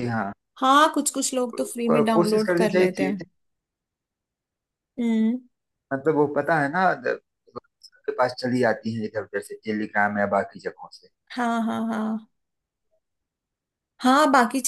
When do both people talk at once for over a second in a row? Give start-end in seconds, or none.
1.6-3.2